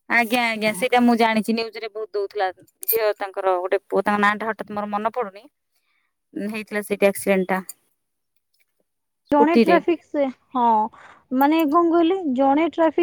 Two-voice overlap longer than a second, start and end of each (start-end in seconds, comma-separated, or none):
none